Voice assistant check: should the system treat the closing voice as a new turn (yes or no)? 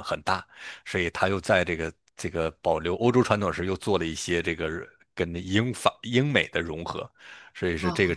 no